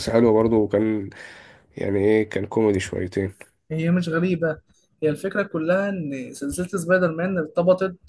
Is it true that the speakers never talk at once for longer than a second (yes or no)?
yes